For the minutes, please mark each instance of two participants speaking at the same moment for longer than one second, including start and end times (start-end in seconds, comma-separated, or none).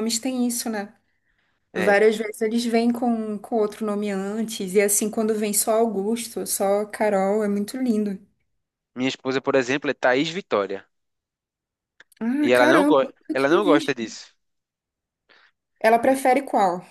12.5-13.9